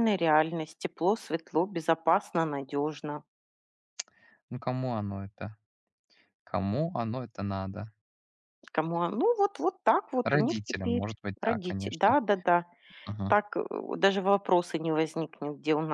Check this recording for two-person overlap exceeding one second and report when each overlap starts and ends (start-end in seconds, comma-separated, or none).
10.2-12.2